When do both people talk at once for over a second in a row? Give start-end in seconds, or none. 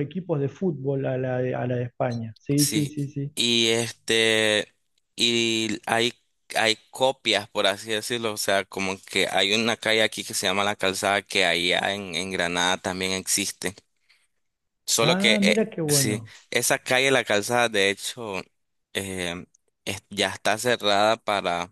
15.0-16.3